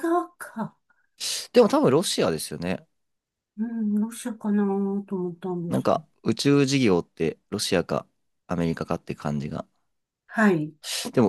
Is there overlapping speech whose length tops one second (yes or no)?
no